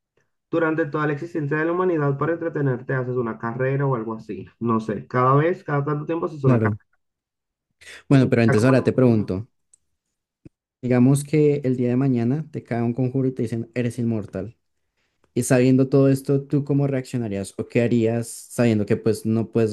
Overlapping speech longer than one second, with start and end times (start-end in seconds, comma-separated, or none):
8.1-9.3